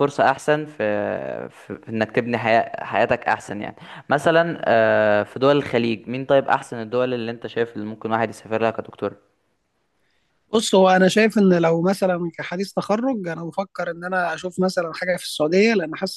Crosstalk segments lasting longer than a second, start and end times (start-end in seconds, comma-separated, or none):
none